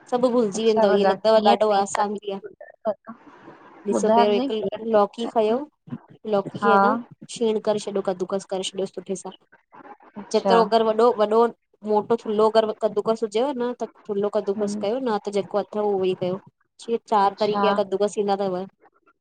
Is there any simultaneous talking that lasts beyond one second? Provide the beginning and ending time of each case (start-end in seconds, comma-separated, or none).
0.6-2.4, 4.0-5.6